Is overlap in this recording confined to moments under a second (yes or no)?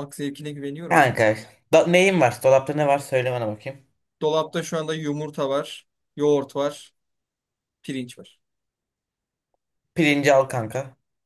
yes